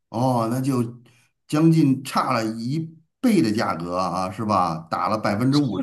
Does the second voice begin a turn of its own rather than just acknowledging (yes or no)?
yes